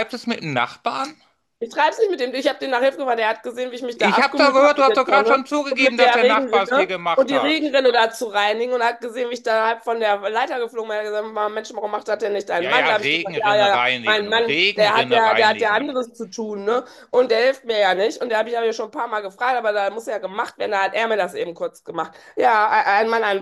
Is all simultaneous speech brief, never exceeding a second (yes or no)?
no